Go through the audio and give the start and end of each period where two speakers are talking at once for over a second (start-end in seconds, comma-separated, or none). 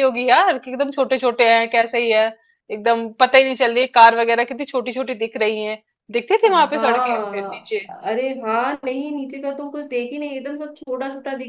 6.5-7.8